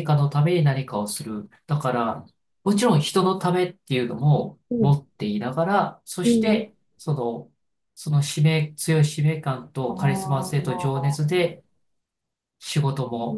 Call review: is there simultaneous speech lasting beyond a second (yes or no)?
yes